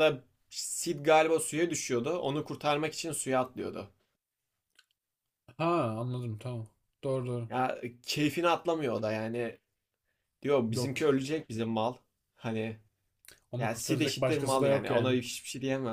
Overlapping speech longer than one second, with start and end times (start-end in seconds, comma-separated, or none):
13.6-15.2